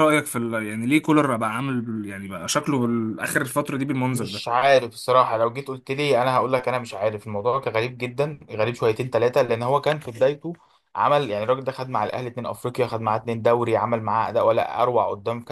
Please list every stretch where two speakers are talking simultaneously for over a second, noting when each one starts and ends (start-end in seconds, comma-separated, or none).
none